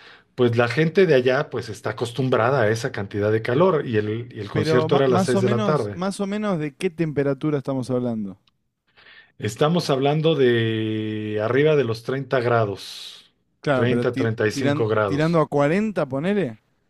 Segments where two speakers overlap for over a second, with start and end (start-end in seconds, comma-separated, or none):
4.5-6.0, 13.7-15.4